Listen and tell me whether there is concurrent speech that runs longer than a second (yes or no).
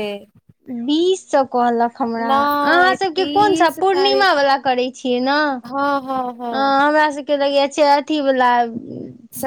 yes